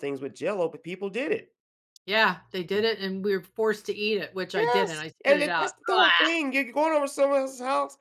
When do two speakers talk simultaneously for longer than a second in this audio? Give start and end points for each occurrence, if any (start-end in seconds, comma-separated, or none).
4.5-6.4